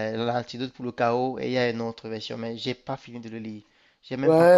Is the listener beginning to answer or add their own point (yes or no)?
yes